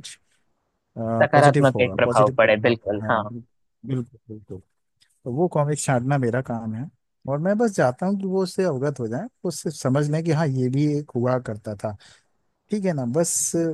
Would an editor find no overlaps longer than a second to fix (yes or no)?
no